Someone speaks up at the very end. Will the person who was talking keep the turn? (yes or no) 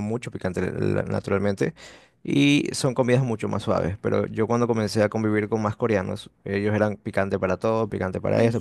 yes